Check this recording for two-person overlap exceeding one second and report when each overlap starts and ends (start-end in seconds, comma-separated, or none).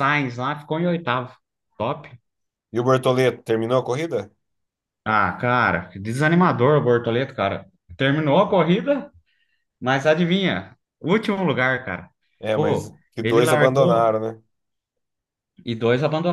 12.5-14.2